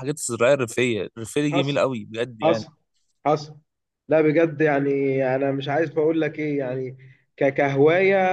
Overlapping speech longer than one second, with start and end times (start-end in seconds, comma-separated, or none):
none